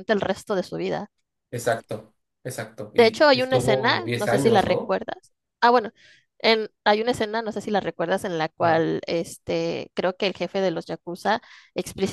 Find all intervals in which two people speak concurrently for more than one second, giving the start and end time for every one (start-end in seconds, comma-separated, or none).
2.9-5.0